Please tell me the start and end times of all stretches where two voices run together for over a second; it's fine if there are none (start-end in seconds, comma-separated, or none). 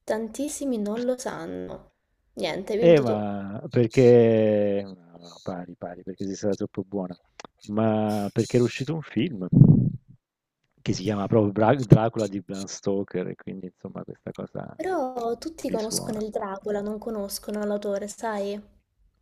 none